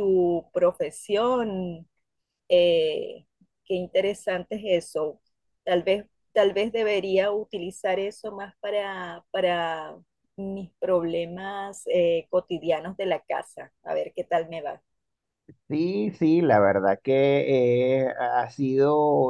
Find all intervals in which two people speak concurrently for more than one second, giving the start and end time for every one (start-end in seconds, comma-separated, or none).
none